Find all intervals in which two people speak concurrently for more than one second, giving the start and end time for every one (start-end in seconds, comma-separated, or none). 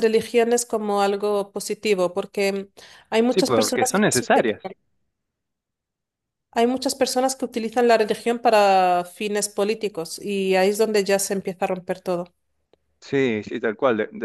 3.3-4.6